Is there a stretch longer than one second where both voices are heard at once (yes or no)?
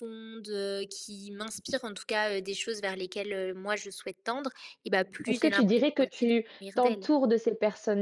yes